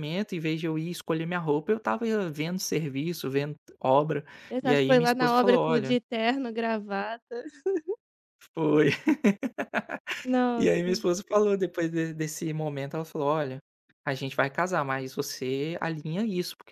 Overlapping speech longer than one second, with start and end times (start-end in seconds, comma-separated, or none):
4.6-5.9